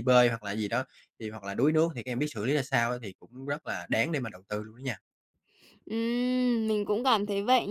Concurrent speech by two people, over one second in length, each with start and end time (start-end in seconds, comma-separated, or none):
none